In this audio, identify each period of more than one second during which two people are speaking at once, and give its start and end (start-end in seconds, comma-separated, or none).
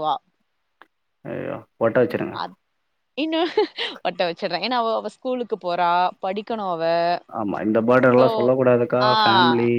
none